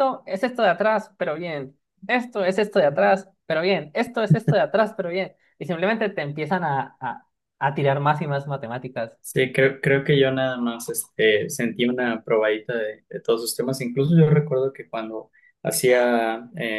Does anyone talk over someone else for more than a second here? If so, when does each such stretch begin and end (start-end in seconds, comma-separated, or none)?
none